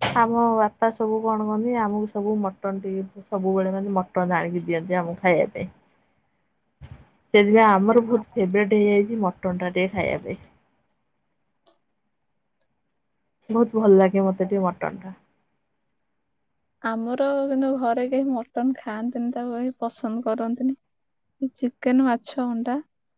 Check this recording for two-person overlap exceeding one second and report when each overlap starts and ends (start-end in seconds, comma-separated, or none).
none